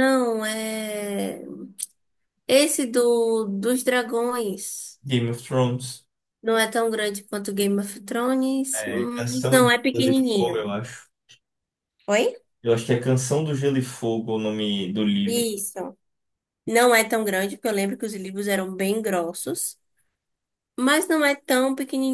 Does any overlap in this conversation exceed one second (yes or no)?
yes